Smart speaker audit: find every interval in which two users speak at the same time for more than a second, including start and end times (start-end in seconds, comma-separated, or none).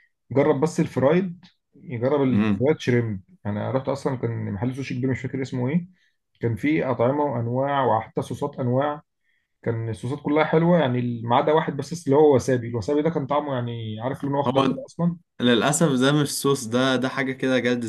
none